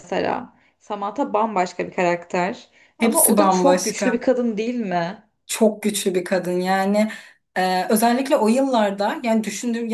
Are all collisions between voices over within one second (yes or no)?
no